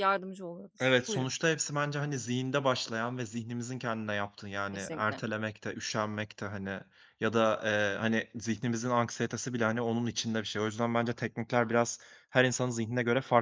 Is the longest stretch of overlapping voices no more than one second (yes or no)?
yes